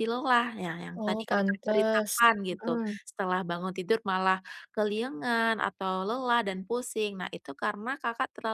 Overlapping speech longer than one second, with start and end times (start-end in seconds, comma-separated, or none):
1.0-3.0